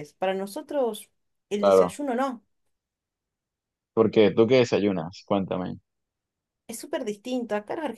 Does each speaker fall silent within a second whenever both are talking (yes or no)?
yes